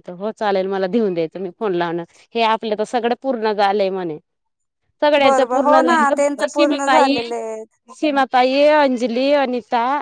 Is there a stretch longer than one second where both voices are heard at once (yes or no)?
yes